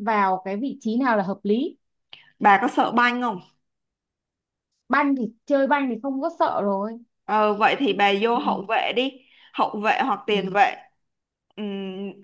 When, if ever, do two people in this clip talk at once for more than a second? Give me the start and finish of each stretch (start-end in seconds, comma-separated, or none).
none